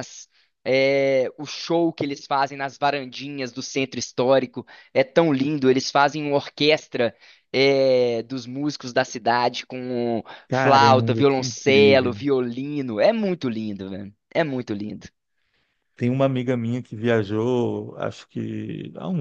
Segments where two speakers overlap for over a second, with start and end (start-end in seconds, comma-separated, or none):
10.5-12.2